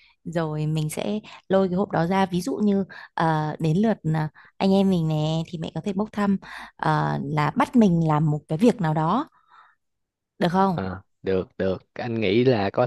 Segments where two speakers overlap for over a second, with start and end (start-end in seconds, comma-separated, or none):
none